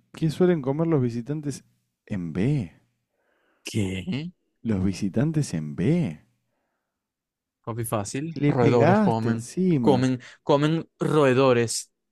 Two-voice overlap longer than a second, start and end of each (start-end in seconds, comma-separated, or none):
8.4-10.0